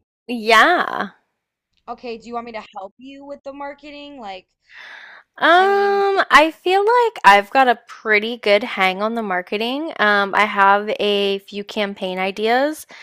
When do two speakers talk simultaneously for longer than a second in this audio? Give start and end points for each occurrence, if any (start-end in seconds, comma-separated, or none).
none